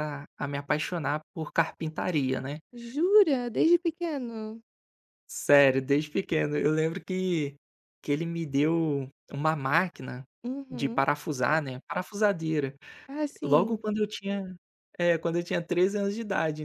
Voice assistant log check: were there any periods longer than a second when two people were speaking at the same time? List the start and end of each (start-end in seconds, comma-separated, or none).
none